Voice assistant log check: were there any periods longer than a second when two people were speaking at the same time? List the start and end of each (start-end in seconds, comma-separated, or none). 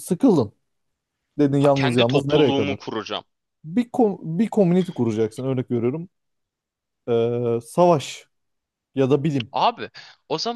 1.6-2.8